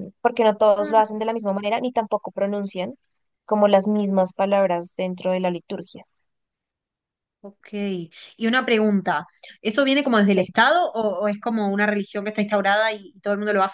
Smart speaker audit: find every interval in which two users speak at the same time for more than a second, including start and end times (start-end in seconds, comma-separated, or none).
none